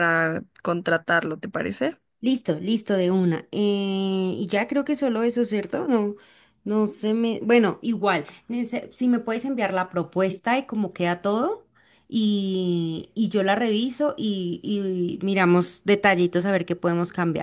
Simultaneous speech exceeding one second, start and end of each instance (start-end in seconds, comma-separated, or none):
none